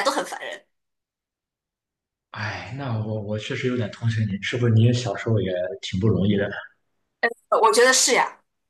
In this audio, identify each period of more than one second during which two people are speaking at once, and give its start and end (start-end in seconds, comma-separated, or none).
none